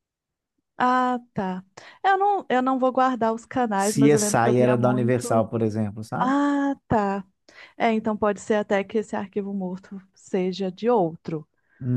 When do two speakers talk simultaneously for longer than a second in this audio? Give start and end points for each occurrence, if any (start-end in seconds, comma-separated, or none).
3.8-5.5